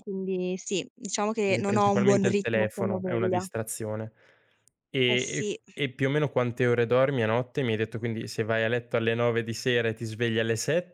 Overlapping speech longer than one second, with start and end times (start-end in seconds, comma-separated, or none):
1.4-3.5